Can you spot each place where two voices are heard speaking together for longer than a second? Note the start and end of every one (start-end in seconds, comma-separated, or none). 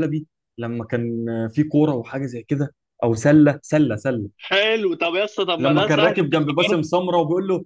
5.6-6.8